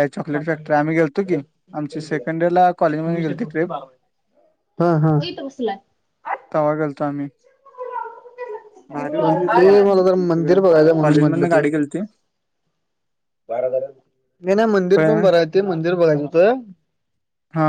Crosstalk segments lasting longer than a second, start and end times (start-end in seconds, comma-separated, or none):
9.0-11.6